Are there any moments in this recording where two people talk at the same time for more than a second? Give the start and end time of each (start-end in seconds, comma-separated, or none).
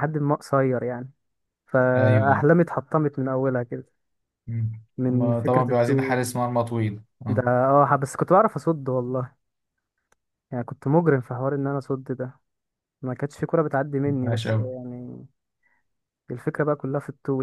5.0-6.3